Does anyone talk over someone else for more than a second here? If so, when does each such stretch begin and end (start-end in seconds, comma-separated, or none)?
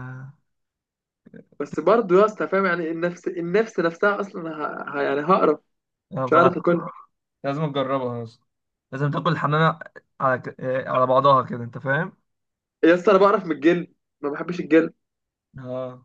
none